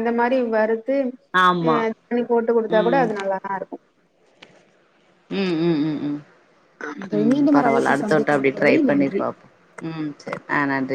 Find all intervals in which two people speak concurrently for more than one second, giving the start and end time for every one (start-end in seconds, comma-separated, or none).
7.2-9.2